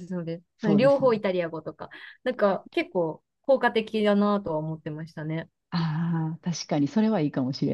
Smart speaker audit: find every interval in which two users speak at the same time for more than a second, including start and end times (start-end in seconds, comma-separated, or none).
none